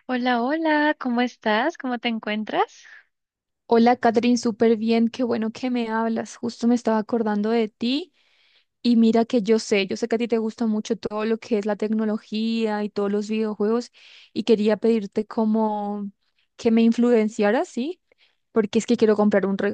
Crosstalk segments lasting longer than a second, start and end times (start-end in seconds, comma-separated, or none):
none